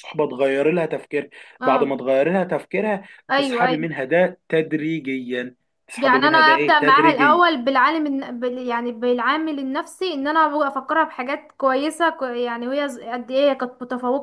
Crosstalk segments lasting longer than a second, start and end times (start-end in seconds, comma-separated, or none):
6.0-7.4